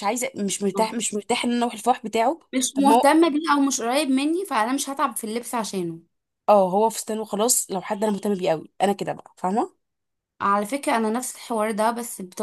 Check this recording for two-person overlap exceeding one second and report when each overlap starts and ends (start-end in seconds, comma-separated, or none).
none